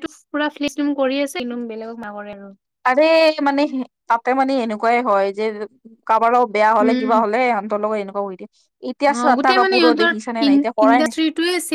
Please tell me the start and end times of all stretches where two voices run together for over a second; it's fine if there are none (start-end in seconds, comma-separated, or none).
9.2-11.2